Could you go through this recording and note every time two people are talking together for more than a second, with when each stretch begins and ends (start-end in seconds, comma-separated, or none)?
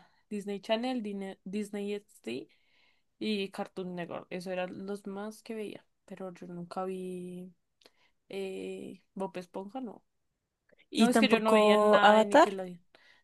11.0-12.5